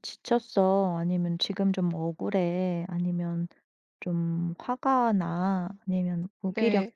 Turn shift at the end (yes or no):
no